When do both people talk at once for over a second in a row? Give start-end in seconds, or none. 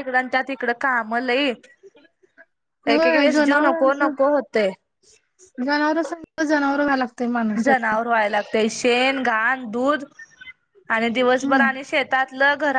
2.9-4.1